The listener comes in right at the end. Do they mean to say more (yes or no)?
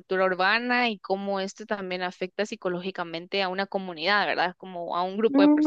yes